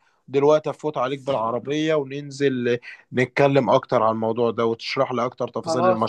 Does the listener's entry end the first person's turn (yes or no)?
yes